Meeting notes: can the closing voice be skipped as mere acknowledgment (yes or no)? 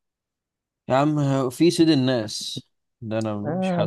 no